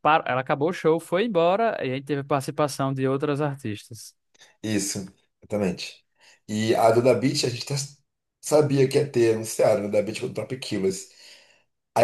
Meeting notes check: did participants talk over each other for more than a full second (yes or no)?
no